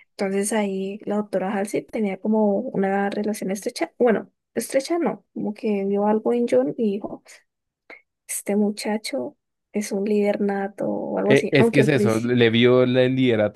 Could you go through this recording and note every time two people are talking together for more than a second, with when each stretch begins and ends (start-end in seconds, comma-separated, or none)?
11.2-12.4